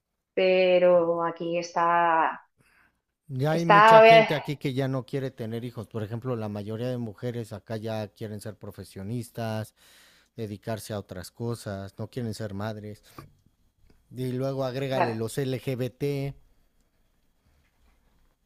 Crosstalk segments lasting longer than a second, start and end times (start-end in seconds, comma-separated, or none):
none